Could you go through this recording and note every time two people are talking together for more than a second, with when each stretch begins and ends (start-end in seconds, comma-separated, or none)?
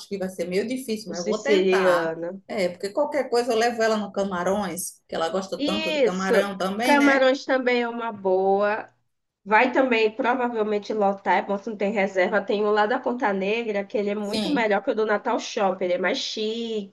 1.1-2.4, 5.6-7.2